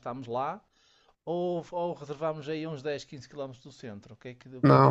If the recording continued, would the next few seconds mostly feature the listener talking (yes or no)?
yes